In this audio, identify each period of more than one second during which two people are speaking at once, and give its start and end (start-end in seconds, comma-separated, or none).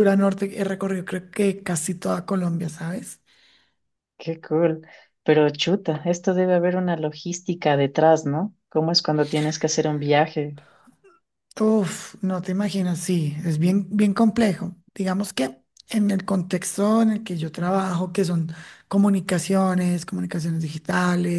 none